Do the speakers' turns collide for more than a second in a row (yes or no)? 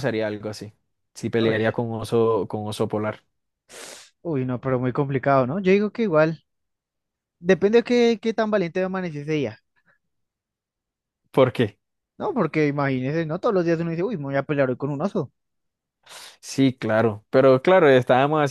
no